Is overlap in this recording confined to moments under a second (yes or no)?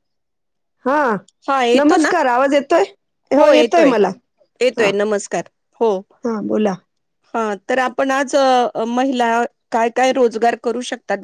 yes